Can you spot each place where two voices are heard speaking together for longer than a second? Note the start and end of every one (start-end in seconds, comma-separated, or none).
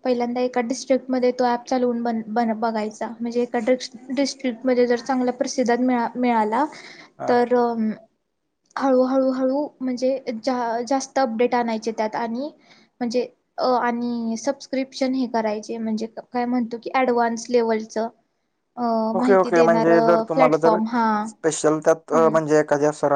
19.2-20.8